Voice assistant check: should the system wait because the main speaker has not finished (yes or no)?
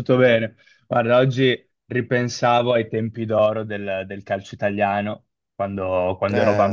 yes